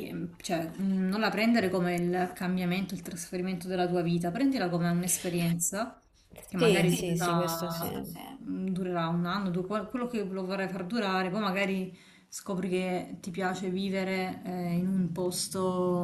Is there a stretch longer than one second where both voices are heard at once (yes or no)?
yes